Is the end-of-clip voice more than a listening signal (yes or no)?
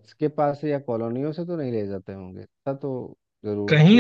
yes